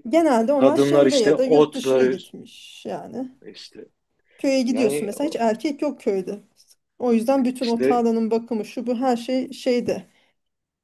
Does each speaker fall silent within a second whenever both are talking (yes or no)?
no